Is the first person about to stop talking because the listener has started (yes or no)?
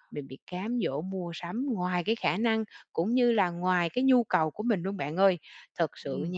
no